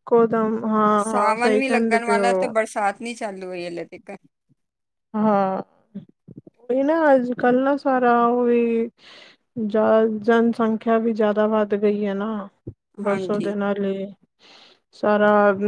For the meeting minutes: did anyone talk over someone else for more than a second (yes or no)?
yes